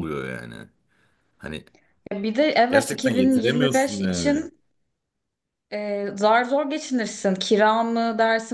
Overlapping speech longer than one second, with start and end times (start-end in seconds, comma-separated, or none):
2.7-4.4